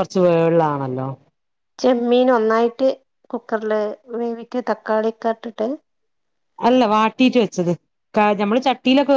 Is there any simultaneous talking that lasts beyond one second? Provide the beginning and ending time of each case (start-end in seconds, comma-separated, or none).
none